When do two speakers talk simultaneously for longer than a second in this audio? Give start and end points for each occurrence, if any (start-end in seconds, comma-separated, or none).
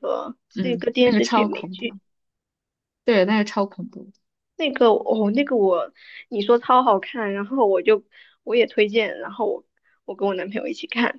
0.5-2.0